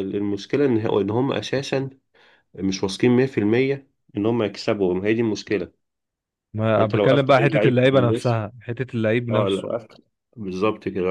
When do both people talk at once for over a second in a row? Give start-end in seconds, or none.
6.8-8.4